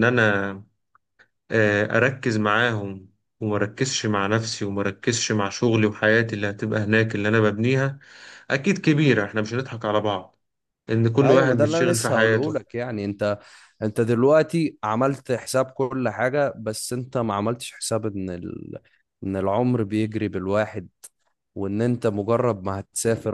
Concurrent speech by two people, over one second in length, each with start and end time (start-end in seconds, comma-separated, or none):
11.2-12.7